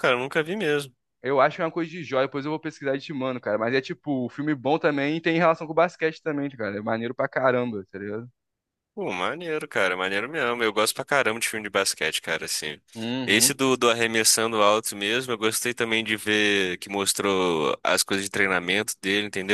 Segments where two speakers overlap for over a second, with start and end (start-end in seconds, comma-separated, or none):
none